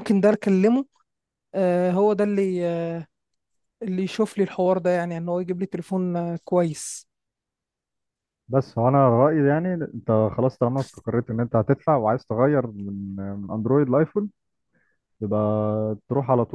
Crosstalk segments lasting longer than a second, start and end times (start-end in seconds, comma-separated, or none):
none